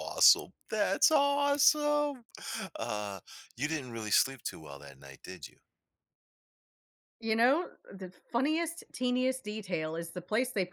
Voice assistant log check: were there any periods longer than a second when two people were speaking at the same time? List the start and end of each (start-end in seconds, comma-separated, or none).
none